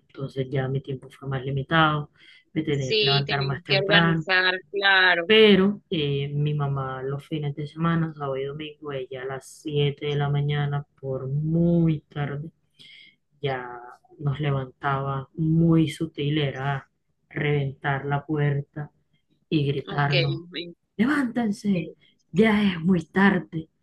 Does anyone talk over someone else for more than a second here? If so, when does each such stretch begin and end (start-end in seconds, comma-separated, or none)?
2.8-4.3